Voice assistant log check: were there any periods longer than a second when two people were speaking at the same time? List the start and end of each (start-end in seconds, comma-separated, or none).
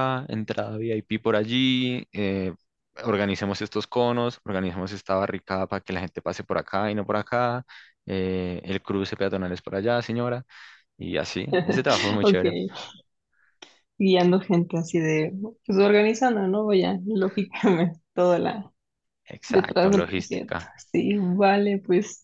19.5-20.8